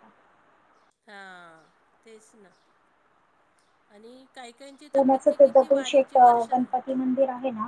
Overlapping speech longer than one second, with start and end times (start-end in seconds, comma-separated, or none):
4.9-6.7